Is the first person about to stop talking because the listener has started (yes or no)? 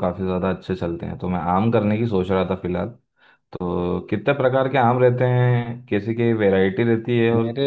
no